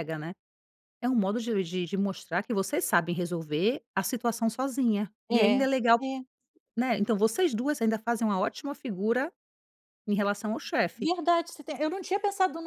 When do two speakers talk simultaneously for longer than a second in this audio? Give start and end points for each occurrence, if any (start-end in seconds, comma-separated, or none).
none